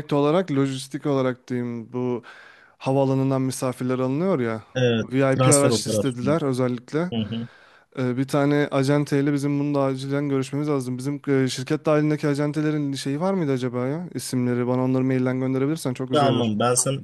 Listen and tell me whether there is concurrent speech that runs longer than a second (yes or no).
yes